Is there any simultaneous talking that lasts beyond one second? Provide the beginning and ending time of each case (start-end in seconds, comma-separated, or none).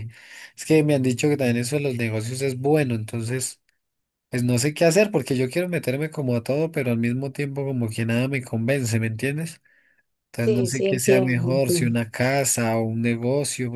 10.4-11.9